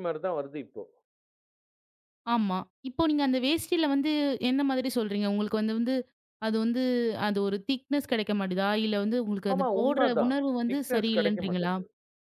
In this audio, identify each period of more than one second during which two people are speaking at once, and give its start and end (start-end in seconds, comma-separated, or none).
9.5-11.7